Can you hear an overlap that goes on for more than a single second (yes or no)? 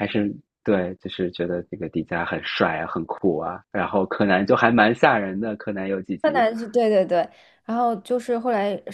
no